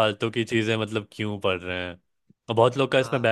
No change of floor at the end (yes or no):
yes